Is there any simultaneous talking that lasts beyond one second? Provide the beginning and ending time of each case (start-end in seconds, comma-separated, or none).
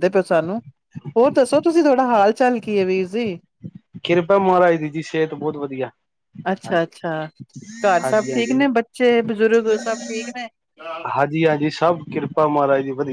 none